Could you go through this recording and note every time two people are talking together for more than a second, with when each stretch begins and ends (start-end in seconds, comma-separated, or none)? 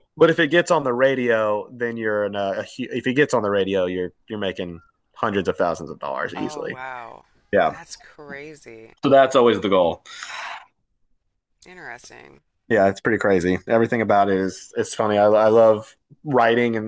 none